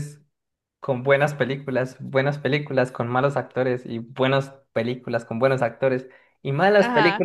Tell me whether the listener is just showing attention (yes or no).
yes